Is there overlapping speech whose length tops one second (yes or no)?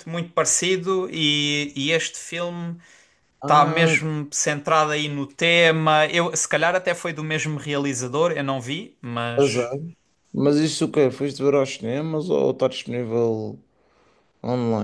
no